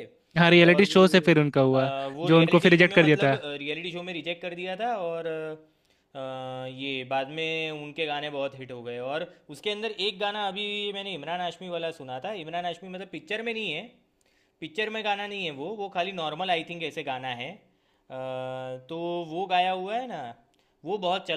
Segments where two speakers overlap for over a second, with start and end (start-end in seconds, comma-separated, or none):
1.7-3.4